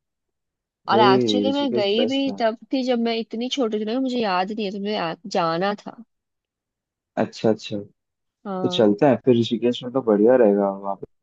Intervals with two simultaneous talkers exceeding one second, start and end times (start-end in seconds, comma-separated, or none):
0.9-2.4